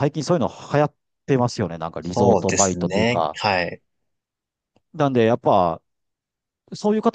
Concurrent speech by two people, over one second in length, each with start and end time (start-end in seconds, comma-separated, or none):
2.0-3.5